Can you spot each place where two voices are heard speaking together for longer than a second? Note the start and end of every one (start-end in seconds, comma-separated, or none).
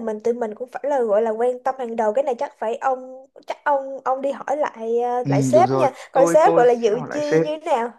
5.2-7.5